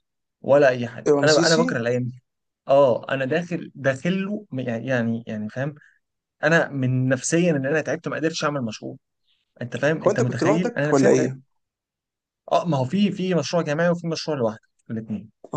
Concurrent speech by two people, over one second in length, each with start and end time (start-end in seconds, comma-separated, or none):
10.0-11.3